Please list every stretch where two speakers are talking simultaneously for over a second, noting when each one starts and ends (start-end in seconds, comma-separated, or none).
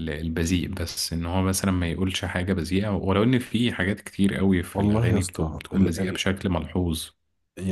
4.8-6.2